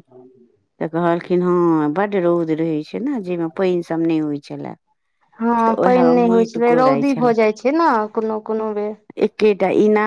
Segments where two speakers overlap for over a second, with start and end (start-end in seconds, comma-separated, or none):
5.7-7.3